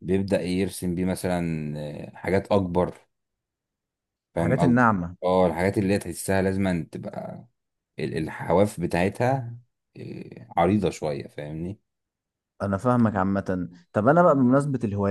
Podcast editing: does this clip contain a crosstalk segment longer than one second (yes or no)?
no